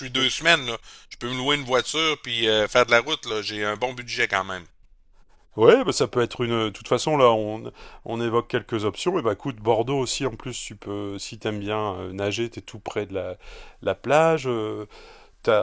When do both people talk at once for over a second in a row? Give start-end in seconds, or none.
none